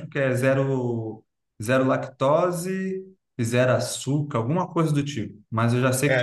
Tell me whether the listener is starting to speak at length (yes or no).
yes